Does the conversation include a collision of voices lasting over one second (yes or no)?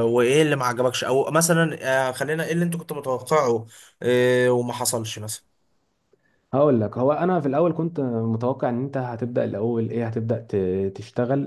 no